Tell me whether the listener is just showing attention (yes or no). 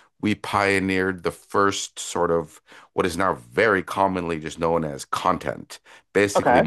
yes